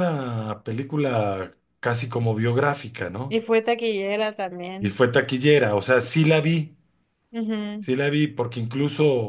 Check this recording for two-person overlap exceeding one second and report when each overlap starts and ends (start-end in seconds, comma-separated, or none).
none